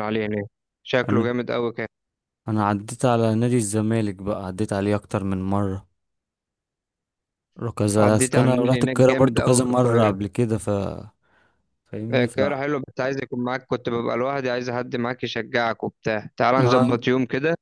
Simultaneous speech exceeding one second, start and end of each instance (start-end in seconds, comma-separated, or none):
8.0-10.1